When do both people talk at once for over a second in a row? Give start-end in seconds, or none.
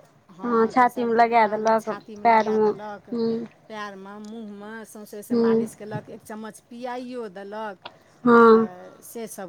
0.7-2.7